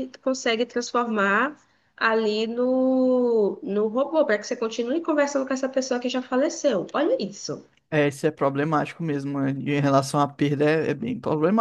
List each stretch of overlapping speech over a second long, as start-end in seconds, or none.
none